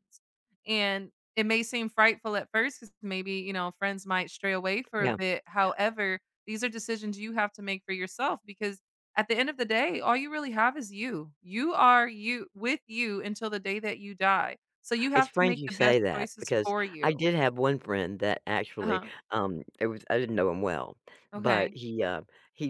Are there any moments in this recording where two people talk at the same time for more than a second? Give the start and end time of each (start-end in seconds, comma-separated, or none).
15.1-17.2